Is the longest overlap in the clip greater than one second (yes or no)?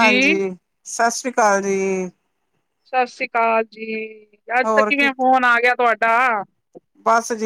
no